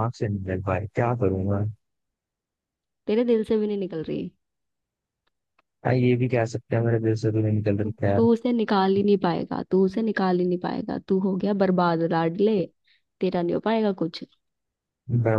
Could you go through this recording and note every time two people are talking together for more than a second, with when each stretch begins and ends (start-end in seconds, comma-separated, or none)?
none